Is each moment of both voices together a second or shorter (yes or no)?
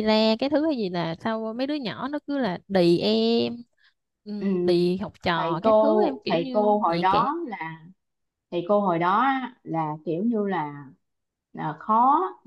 no